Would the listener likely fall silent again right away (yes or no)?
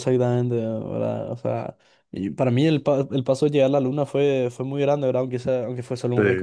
yes